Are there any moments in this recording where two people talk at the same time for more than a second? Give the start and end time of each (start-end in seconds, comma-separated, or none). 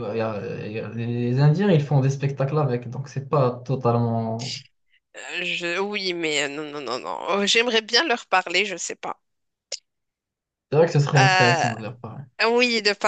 none